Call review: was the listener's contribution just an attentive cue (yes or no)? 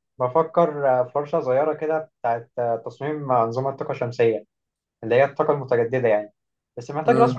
yes